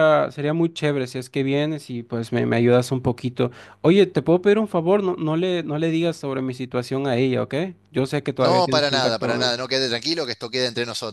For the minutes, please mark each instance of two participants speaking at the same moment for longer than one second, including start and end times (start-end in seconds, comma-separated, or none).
8.4-9.6